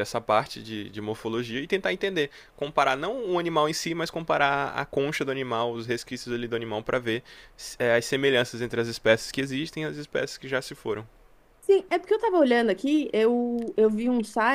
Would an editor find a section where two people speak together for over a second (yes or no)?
no